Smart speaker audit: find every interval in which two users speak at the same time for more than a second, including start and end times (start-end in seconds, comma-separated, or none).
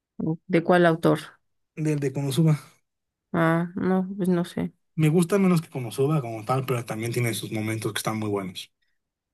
none